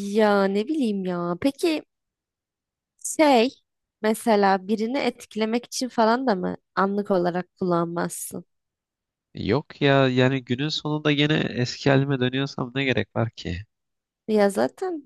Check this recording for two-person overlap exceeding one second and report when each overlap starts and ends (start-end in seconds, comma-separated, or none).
none